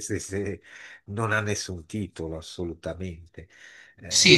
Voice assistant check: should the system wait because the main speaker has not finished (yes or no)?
no